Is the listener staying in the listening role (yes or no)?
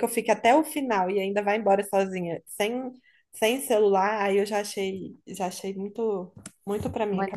no